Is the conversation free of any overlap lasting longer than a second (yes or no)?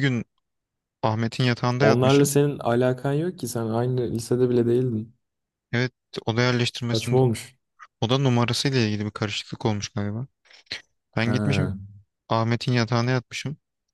yes